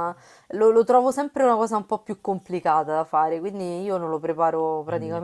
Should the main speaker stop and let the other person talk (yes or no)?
no